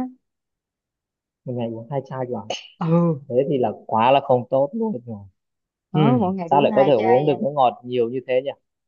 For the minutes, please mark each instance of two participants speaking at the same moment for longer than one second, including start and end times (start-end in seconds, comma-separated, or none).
5.9-7.4